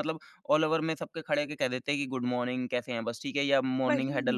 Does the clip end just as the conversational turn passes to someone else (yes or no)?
no